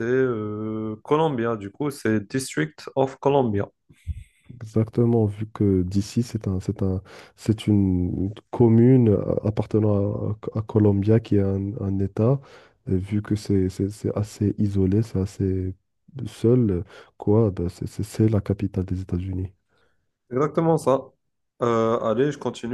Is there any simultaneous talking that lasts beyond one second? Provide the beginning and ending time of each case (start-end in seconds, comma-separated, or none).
none